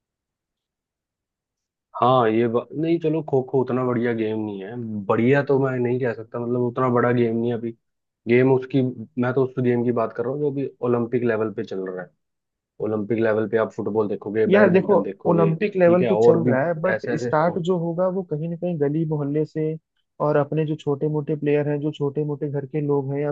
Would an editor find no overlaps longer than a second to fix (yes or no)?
no